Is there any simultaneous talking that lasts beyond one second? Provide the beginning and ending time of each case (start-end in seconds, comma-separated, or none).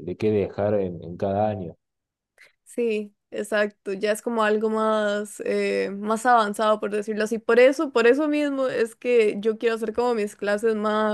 none